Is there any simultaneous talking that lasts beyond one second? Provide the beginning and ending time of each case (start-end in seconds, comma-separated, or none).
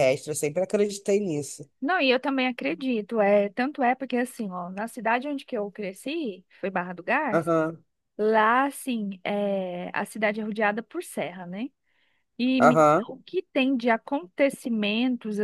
none